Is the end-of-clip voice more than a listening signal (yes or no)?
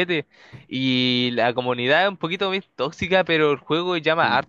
no